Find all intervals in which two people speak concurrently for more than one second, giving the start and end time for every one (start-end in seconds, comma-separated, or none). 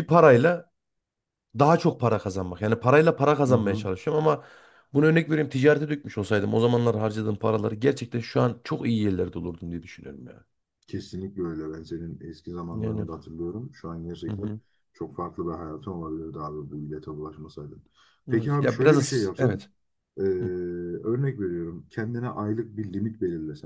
18.3-19.6